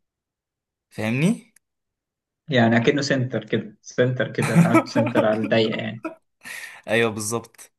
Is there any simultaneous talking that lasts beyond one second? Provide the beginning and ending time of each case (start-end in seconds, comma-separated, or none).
none